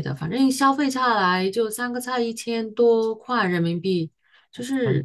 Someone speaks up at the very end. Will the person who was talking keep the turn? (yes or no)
no